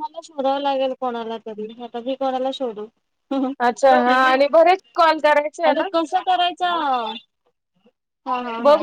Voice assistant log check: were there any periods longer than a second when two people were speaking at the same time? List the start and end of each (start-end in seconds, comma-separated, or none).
none